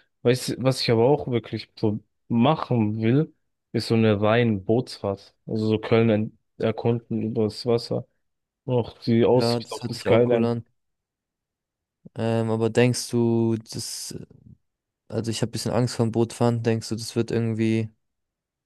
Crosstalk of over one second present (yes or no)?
yes